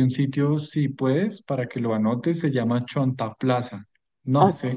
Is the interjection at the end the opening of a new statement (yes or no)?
no